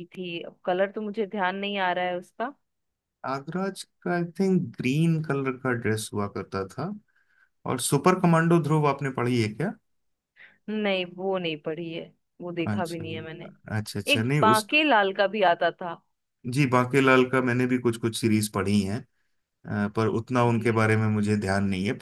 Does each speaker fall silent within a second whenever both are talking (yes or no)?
yes